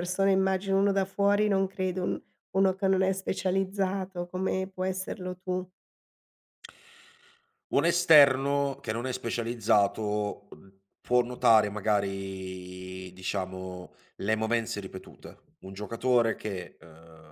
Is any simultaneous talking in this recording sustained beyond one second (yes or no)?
no